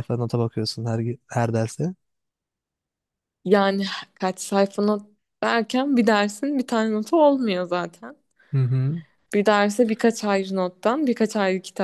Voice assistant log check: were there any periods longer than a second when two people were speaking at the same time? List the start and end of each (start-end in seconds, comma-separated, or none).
none